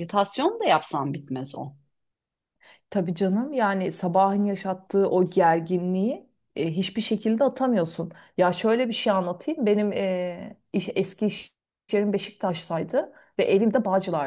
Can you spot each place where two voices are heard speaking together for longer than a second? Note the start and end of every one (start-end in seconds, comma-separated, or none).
none